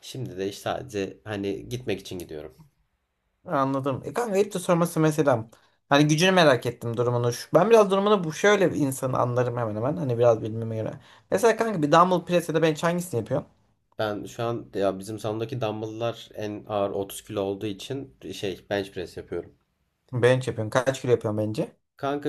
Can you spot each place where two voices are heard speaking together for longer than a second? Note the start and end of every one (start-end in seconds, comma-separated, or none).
none